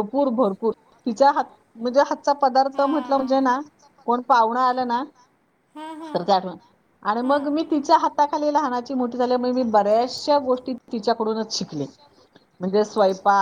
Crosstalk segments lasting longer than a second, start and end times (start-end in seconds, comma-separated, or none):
2.1-3.4